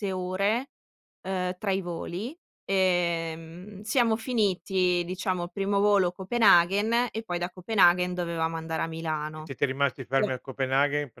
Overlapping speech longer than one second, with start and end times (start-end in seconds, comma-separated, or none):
none